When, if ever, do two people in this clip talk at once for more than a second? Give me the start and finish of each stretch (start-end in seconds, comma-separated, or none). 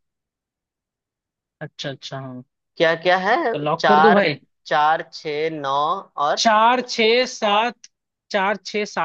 none